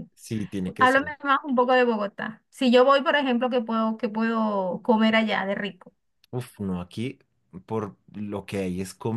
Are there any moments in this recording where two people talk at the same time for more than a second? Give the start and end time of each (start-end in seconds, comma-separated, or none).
none